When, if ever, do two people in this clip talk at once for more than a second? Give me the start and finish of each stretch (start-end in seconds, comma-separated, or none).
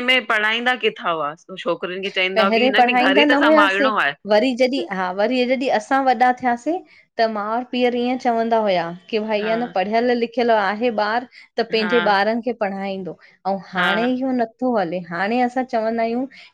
2.4-3.9